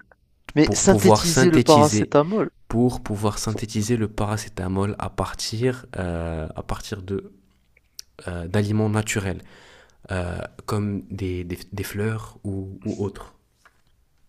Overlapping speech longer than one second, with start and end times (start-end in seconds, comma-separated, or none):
0.6-2.1